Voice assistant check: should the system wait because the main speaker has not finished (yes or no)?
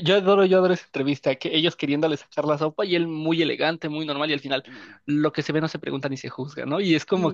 yes